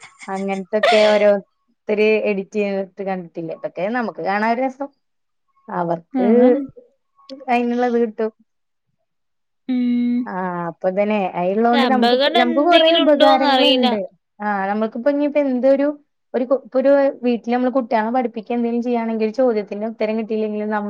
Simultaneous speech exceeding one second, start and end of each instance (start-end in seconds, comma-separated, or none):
11.6-13.9